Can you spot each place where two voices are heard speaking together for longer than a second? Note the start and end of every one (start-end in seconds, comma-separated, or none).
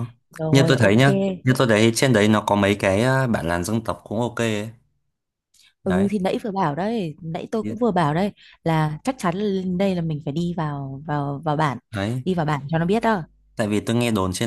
none